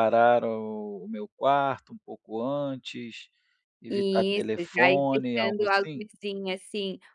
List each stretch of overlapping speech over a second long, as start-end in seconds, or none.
3.9-6.1